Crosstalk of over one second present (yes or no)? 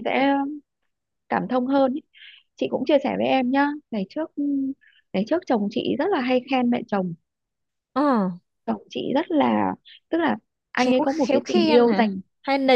yes